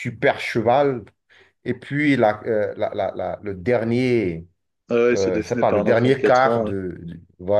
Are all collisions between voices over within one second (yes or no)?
no